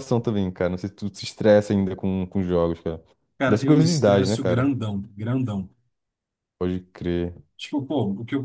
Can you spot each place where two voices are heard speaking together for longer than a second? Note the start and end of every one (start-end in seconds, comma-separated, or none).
3.5-4.7